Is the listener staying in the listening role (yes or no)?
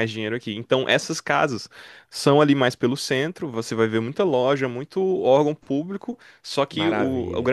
yes